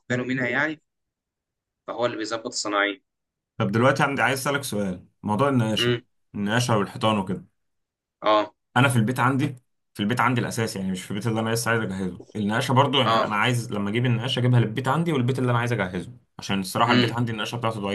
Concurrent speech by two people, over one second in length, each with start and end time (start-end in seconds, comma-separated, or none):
none